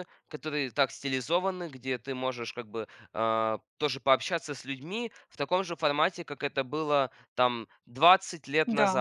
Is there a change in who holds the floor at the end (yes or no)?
no